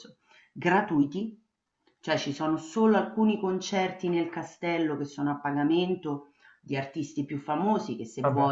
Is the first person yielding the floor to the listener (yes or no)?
no